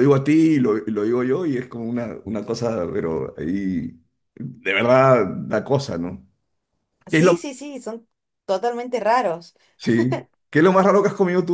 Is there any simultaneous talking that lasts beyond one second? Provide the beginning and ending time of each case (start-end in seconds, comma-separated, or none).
none